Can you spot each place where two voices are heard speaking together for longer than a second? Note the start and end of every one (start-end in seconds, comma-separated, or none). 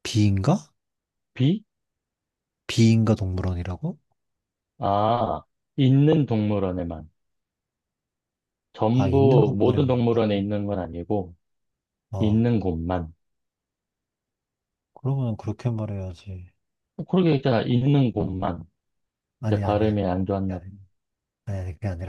8.9-10.5